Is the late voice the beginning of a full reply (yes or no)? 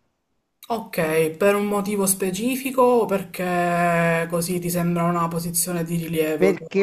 yes